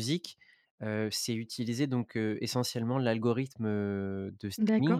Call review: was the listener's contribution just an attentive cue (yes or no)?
no